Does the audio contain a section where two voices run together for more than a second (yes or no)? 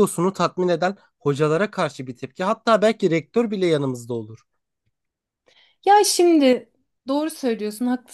no